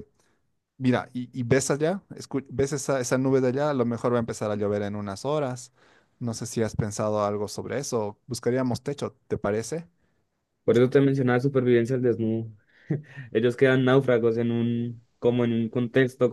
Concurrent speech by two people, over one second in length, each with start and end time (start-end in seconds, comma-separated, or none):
none